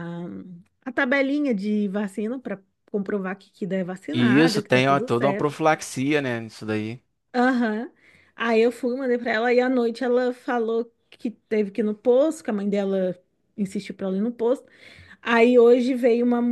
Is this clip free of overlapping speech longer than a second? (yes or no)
no